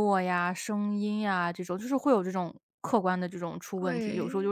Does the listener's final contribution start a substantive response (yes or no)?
no